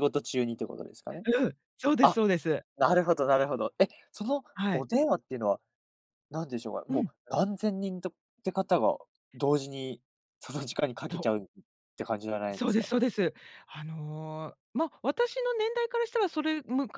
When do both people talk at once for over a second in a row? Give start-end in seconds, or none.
none